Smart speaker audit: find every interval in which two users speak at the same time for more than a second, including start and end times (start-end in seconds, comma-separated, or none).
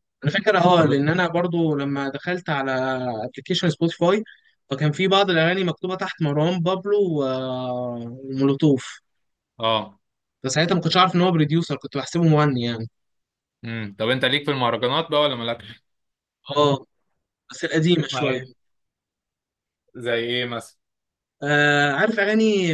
none